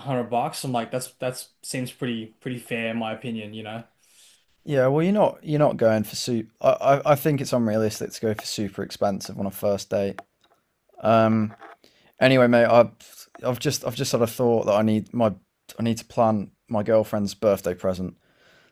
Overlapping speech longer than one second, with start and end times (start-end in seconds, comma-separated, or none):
none